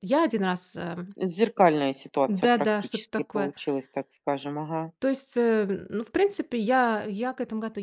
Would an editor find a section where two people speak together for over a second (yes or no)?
yes